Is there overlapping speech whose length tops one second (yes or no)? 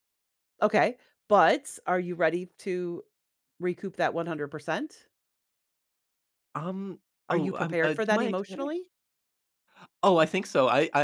yes